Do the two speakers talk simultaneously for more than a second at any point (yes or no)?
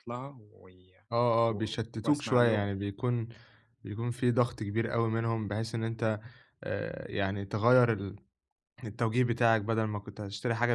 yes